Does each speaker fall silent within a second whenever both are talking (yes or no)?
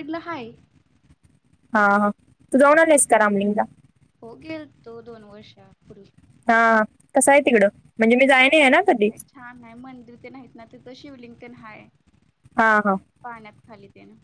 yes